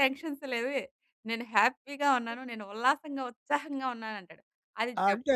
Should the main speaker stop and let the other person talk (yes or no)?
no